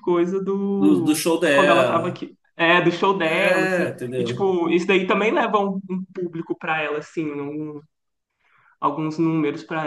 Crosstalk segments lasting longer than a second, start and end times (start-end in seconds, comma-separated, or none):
0.8-2.2, 3.2-4.5